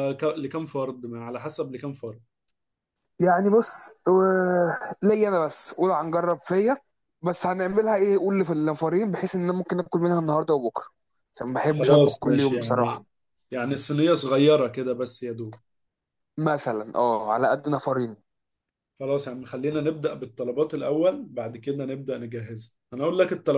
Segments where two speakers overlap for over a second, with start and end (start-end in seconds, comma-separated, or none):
11.7-13.1